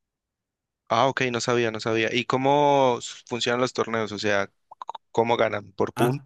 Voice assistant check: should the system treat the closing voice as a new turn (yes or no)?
yes